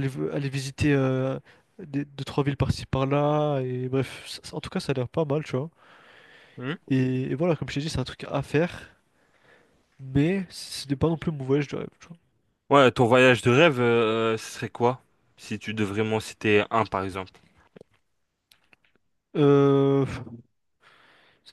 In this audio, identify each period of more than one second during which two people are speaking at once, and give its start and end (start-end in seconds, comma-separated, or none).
none